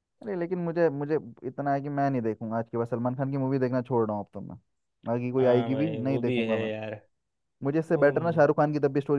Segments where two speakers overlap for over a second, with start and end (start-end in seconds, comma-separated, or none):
5.4-6.7